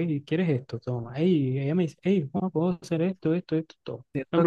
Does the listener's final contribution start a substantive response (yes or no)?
no